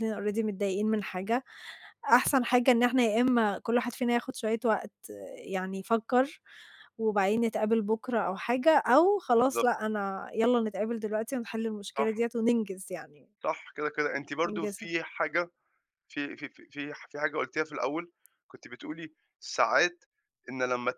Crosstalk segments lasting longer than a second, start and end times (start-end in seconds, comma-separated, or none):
none